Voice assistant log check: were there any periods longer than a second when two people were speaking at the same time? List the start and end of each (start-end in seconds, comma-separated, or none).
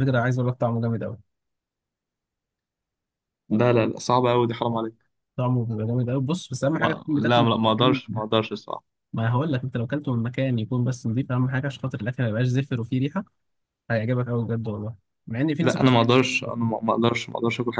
6.8-8.2